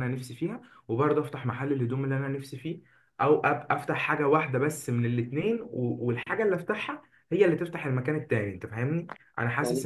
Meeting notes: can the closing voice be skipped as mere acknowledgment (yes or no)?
yes